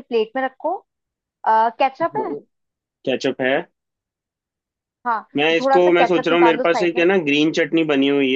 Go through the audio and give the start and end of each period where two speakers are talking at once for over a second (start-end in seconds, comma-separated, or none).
5.4-7.0